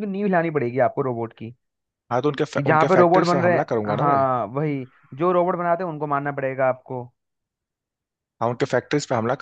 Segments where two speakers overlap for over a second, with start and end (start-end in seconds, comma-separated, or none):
2.5-4.2